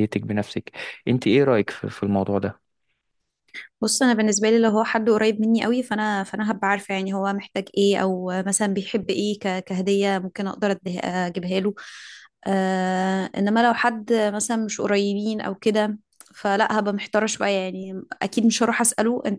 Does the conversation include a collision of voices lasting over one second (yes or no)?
no